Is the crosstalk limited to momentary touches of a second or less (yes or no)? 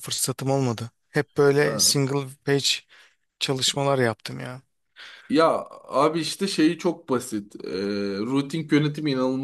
yes